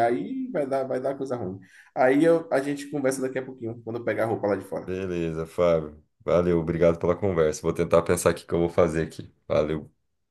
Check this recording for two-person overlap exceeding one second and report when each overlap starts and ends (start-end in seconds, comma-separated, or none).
none